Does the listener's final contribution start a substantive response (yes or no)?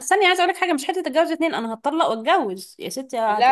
yes